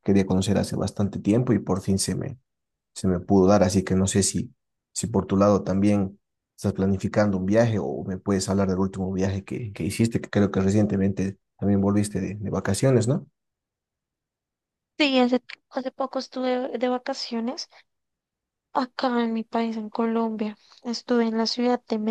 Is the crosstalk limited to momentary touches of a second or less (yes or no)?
yes